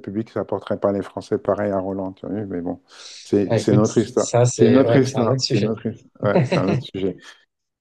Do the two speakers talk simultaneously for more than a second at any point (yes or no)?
yes